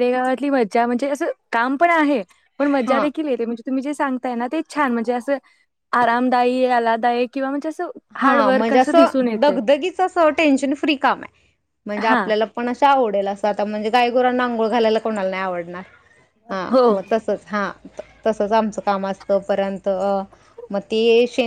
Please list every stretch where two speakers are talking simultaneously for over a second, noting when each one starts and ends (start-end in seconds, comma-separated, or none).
none